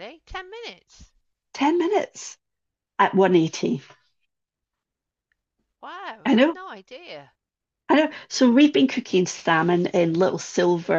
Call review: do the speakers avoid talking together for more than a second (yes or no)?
yes